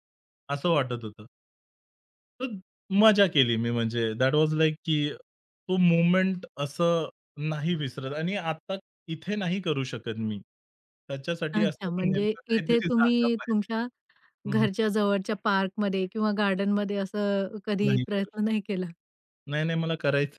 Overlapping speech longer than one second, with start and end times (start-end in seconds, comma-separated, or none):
11.5-13.7